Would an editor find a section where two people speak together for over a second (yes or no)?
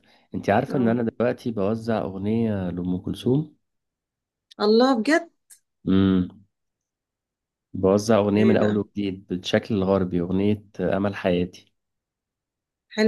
no